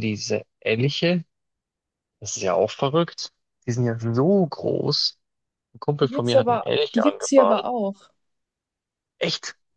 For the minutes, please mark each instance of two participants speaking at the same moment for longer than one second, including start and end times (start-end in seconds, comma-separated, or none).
6.0-7.6